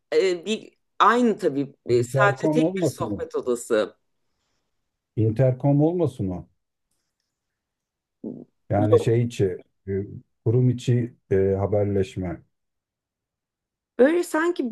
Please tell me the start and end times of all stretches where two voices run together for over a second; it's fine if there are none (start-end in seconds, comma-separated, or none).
1.9-3.2